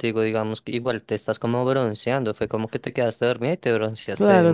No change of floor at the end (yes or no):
no